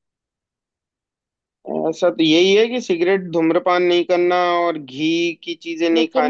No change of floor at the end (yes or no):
yes